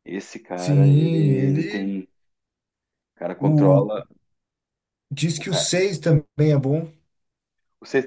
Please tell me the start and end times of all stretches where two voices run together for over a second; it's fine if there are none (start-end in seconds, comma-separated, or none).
0.6-1.9